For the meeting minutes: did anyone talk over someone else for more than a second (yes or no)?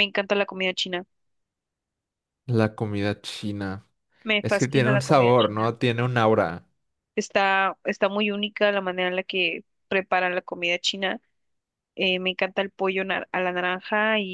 yes